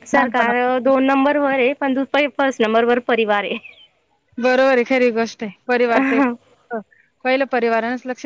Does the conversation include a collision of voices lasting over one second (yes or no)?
no